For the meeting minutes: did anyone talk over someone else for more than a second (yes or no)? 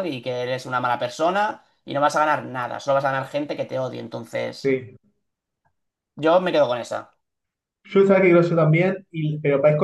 no